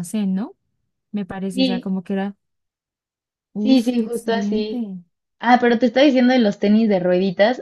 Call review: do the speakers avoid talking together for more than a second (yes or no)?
no